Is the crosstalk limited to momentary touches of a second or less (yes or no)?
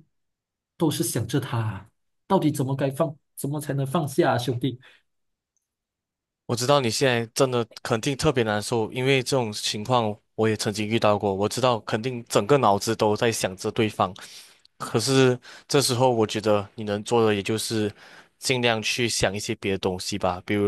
yes